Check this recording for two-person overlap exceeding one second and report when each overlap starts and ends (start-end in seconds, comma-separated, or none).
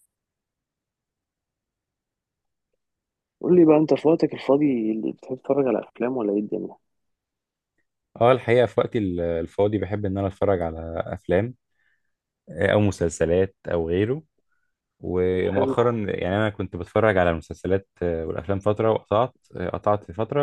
none